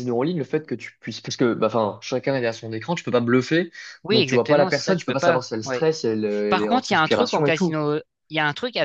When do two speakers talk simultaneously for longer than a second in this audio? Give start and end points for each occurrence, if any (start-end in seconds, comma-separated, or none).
4.1-5.9, 6.5-7.8